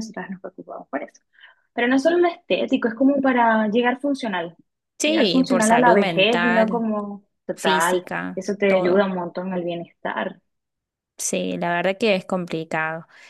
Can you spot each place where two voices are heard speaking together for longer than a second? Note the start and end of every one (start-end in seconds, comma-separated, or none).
5.0-6.9, 7.5-9.1